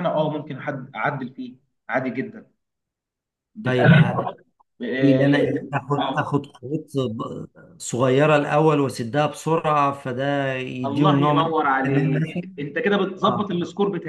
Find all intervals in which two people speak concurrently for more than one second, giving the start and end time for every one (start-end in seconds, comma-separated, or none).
10.8-12.5